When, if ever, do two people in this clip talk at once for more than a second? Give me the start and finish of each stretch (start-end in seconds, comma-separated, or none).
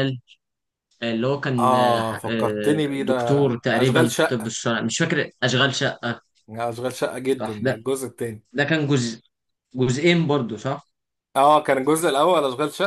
1.6-4.5